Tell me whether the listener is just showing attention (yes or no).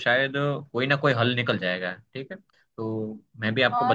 no